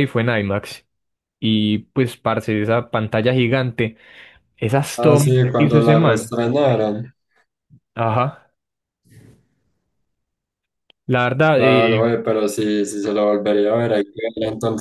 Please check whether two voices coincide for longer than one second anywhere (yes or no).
yes